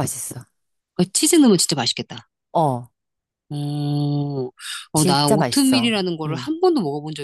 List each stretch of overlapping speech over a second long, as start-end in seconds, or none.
4.9-6.5